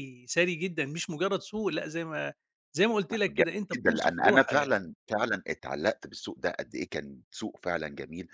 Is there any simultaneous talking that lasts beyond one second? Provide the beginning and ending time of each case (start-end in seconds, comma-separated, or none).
3.1-4.8